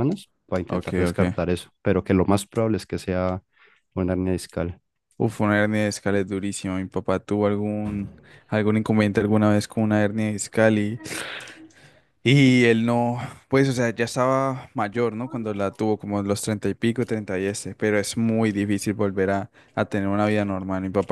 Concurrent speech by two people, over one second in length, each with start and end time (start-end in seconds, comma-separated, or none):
none